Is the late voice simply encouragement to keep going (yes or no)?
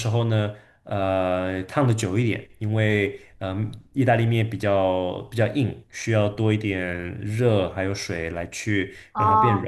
no